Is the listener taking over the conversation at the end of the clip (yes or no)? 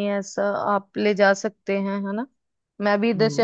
yes